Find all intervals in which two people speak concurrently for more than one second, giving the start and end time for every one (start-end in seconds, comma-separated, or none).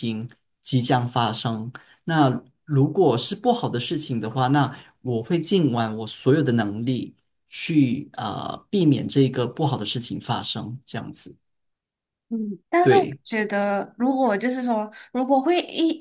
none